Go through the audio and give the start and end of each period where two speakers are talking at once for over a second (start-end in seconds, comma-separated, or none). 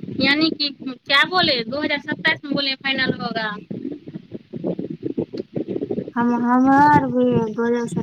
none